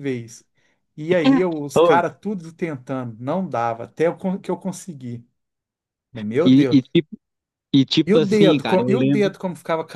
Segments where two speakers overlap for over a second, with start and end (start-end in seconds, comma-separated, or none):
8.1-9.3